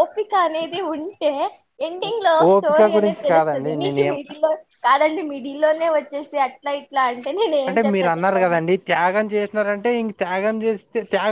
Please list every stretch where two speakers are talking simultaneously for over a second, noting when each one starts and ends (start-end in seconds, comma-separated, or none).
2.5-4.2